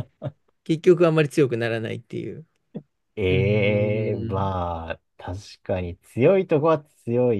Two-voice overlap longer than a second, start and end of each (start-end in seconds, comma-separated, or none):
3.3-4.5